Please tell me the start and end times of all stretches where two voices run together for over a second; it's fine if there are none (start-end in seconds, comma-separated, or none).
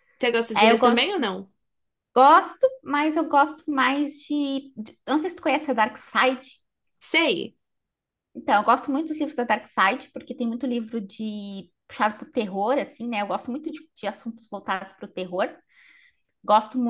none